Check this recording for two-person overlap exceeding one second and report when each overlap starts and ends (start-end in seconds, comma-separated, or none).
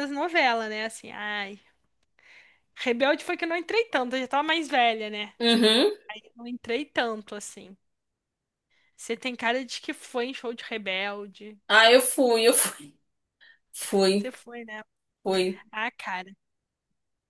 none